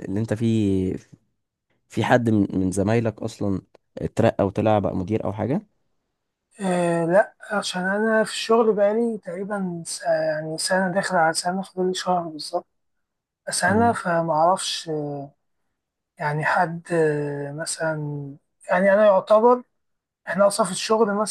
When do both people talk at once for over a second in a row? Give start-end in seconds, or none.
none